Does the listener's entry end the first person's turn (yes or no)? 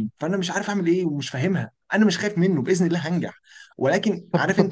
yes